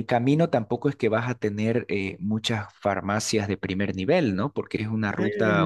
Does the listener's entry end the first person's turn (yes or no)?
no